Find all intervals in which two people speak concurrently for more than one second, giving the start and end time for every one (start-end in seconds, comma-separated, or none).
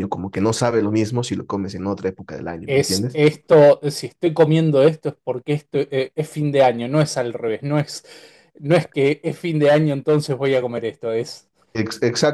none